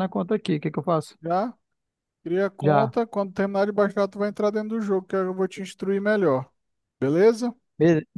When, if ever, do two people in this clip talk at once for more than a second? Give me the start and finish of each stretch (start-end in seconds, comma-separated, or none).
none